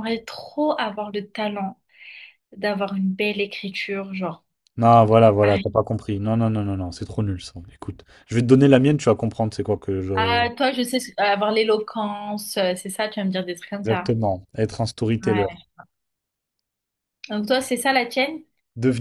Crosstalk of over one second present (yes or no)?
no